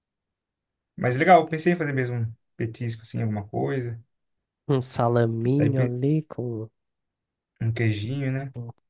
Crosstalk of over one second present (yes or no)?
no